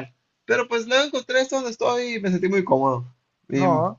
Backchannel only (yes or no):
yes